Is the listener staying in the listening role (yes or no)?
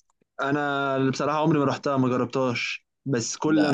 yes